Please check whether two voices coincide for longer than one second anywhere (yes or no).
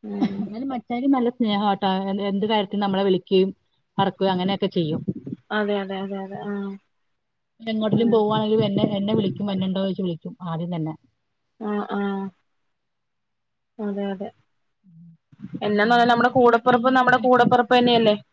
yes